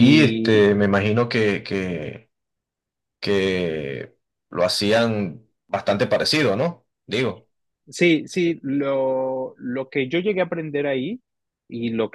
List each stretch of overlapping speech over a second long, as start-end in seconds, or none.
none